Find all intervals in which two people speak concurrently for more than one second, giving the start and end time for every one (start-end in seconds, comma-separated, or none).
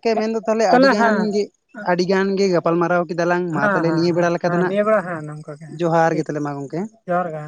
3.5-6.3